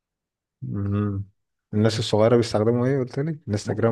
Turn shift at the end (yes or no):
yes